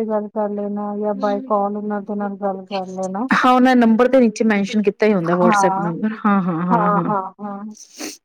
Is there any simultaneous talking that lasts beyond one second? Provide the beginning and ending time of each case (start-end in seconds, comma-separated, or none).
none